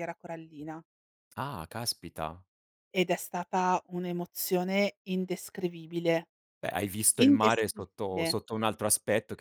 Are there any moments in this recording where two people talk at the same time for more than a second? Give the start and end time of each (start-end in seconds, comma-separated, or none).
7.2-8.4